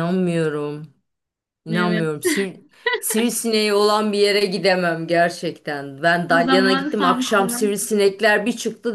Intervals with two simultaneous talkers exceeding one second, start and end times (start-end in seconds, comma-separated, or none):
6.3-7.6